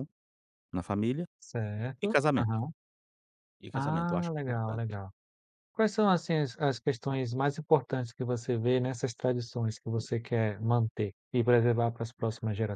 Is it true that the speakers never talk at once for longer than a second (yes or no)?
no